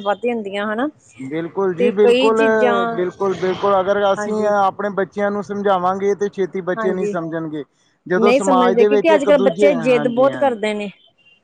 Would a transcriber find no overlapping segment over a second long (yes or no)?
no